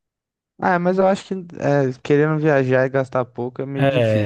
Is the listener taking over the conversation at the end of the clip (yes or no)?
yes